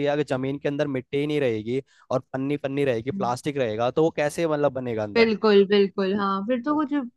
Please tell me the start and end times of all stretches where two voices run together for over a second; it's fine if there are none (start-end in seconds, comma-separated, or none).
none